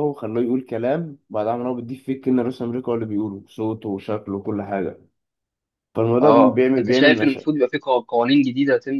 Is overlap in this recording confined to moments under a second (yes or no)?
no